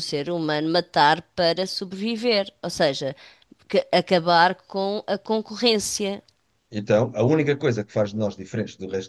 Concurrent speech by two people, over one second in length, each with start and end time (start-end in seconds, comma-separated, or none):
none